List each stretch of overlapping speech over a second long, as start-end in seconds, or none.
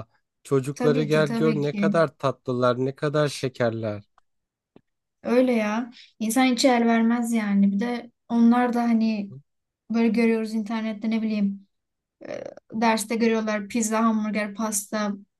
0.7-1.9